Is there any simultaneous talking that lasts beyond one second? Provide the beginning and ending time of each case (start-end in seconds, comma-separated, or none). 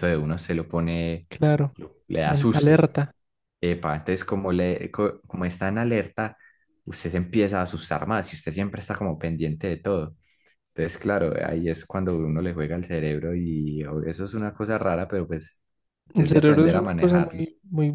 16.2-17.4